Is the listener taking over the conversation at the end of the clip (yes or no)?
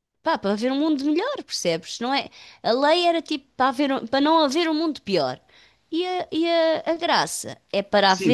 yes